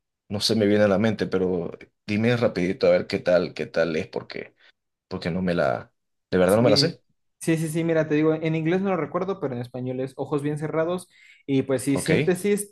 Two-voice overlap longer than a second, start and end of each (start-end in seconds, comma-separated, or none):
none